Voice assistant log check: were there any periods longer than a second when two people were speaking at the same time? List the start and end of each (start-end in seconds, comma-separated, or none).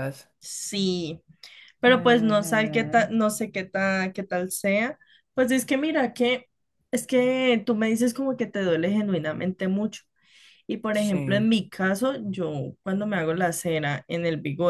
1.9-3.1